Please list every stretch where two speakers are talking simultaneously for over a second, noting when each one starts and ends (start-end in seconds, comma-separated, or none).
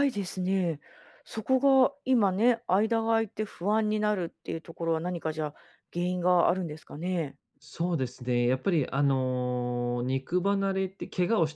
none